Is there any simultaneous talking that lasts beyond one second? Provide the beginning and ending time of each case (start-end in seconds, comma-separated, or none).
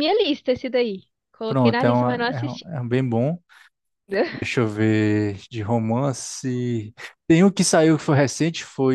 1.5-2.7